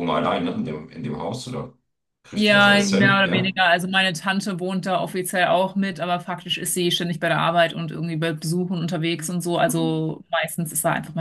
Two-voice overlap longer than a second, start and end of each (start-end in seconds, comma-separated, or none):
2.4-3.6